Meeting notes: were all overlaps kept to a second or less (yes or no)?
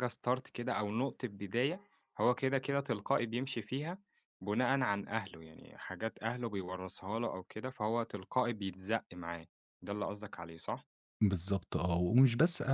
yes